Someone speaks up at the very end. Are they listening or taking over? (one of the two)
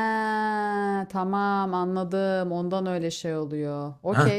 taking over